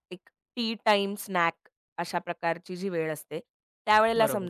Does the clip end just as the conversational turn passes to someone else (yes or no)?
no